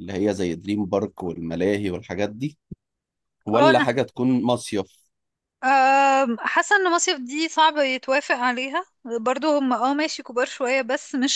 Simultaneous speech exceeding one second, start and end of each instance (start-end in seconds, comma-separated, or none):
none